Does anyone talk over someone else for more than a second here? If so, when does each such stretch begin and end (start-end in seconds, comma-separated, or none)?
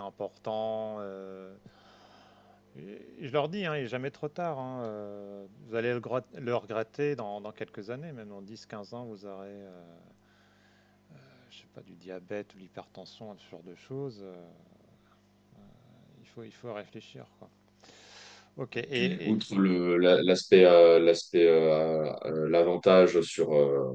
none